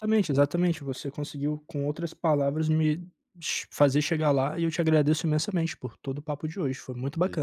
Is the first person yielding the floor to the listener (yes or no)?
yes